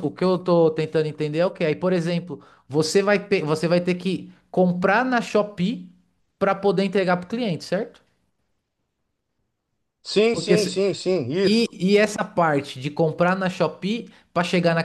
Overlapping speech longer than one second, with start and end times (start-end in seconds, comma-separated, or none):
none